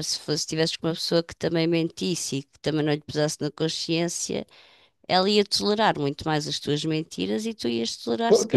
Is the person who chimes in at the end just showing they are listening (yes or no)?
no